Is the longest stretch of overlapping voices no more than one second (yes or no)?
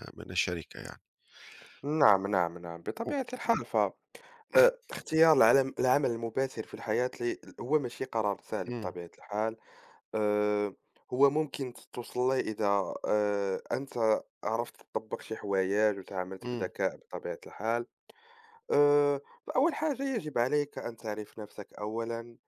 yes